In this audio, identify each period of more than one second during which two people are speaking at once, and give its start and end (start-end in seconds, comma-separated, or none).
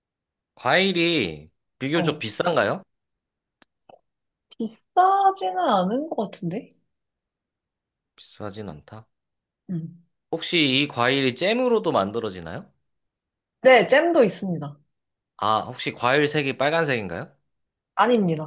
none